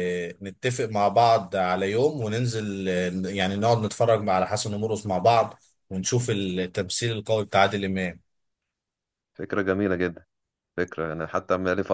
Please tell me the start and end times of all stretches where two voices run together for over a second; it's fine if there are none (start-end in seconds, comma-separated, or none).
none